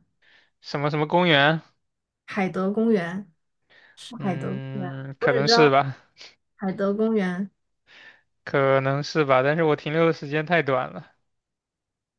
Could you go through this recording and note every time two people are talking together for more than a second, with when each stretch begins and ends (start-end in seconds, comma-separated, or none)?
4.2-5.7